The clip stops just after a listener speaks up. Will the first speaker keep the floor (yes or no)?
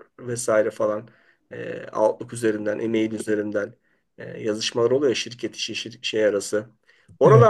yes